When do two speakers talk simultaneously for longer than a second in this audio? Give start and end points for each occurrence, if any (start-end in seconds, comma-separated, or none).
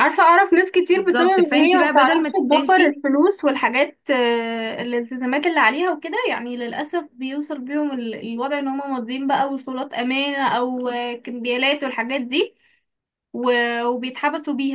0.9-2.9